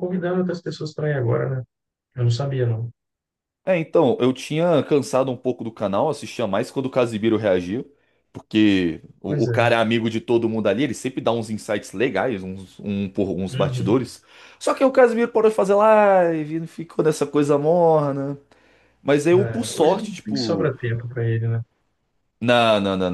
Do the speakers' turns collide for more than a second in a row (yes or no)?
yes